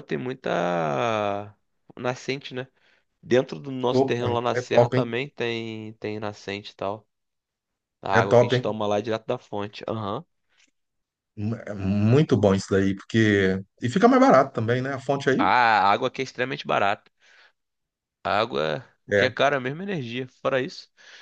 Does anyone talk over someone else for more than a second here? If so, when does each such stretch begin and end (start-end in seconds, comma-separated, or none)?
3.9-5.1